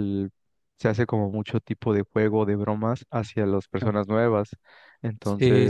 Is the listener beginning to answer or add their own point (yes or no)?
yes